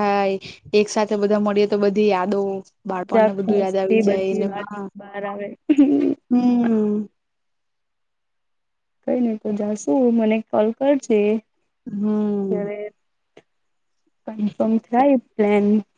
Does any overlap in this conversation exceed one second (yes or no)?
yes